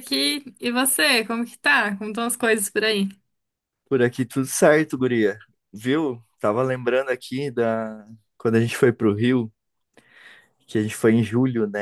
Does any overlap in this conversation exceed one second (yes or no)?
no